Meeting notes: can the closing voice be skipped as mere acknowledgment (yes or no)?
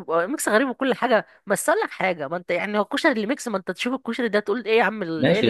no